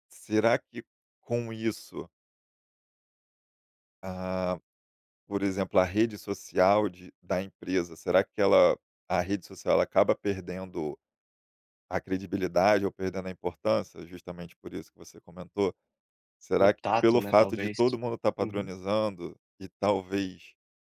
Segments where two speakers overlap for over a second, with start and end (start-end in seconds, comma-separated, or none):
16.6-17.8